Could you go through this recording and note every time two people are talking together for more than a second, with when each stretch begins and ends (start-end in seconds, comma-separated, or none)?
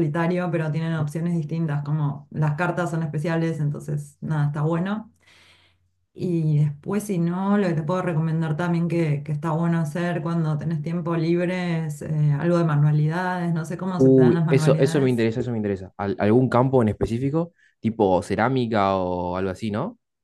13.9-15.2